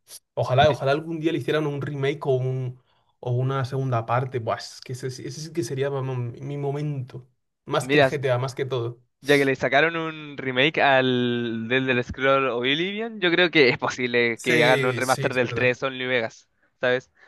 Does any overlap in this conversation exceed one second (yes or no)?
yes